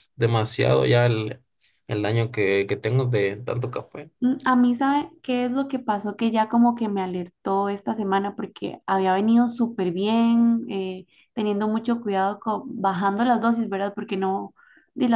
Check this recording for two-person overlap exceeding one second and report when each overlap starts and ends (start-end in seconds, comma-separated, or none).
none